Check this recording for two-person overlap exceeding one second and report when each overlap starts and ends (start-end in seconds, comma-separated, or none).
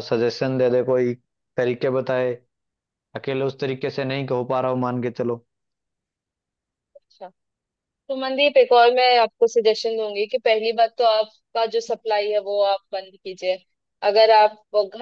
none